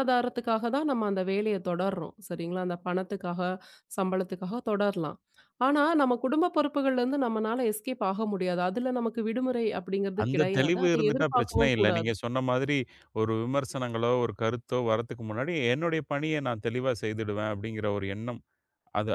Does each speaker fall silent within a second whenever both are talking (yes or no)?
no